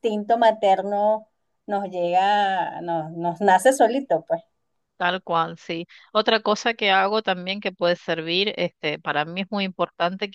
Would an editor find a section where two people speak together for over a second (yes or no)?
no